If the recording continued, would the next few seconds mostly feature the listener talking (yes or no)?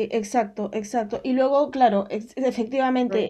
no